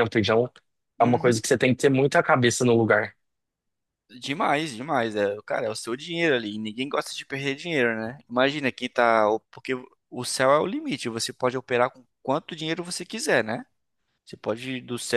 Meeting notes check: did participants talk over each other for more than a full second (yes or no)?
no